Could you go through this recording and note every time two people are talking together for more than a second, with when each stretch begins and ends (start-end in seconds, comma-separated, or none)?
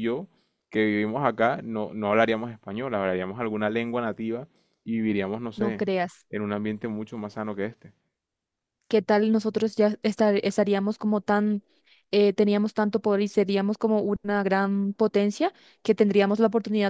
none